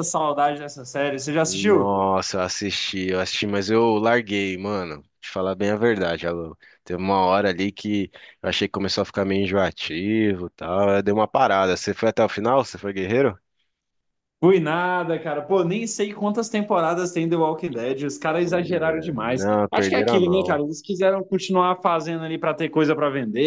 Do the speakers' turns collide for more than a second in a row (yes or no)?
yes